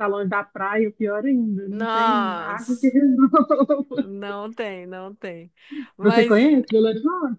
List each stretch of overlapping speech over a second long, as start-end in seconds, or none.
1.7-2.9